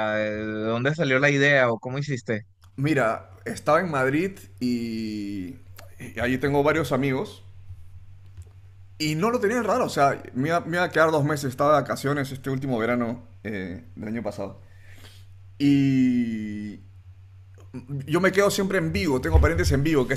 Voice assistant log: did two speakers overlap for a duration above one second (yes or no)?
no